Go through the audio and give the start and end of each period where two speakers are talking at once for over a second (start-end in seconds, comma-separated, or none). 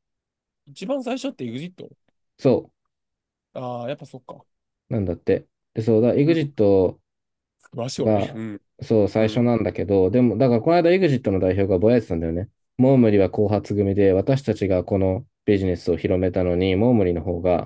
none